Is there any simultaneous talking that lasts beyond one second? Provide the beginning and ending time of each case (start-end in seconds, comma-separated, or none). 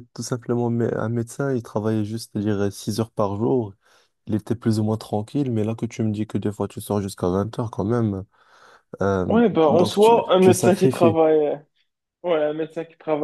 9.3-11.2